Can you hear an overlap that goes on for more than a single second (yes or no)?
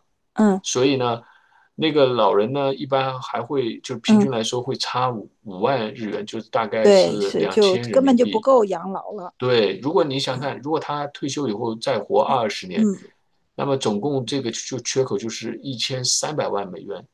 yes